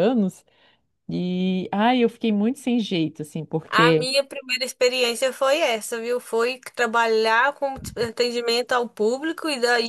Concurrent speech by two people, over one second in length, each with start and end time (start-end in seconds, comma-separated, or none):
none